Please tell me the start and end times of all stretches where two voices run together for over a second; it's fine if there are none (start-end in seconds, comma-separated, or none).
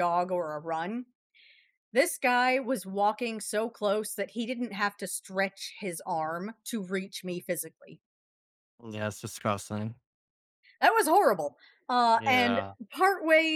none